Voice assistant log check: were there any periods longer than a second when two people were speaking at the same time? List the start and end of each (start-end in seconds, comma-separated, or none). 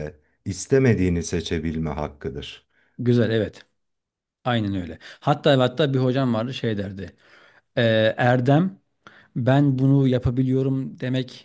none